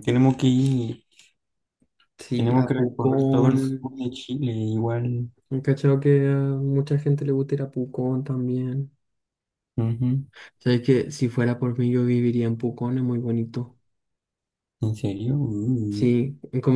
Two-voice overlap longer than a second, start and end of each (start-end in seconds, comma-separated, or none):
2.4-3.9